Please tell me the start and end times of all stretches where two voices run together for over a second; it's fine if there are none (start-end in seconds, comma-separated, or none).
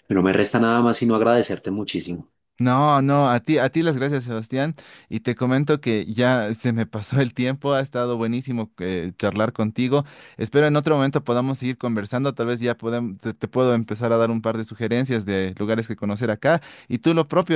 none